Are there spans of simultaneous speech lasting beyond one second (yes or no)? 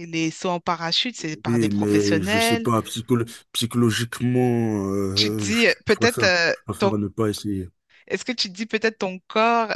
yes